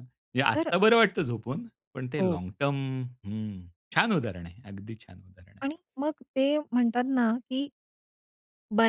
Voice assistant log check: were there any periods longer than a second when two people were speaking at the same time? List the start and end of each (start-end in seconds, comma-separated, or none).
none